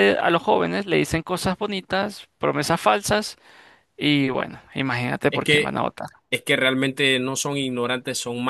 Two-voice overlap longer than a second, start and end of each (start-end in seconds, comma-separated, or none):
none